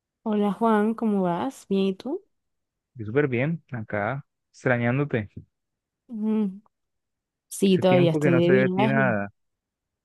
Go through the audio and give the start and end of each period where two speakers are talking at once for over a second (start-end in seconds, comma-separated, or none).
7.7-9.0